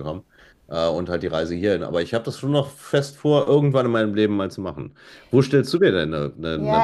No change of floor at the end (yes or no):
no